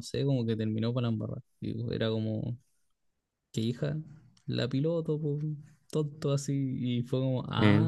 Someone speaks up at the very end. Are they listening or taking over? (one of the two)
listening